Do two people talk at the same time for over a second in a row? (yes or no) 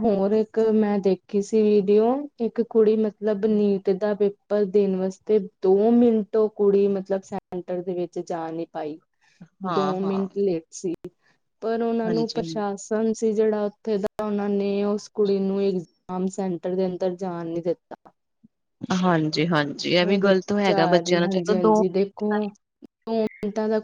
yes